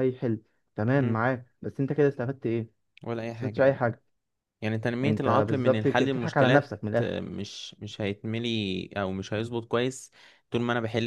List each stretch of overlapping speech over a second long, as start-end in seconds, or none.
5.0-7.3